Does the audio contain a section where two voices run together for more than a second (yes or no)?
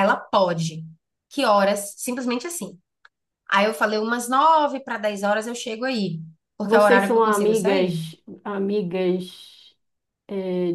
yes